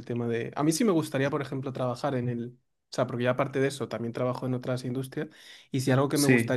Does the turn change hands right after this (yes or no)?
no